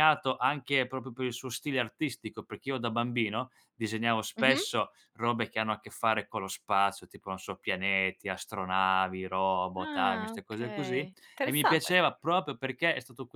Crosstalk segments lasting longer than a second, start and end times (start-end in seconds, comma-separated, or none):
9.8-11.9